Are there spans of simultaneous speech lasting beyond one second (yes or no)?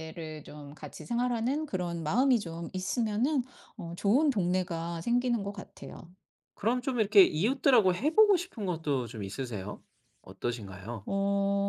no